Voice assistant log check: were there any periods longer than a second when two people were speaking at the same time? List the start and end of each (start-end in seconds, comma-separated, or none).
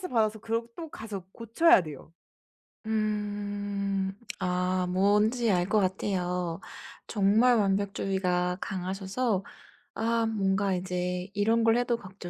none